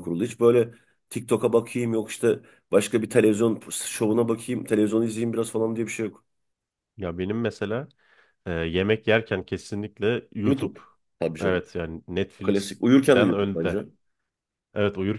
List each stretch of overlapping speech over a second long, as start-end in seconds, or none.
12.4-13.8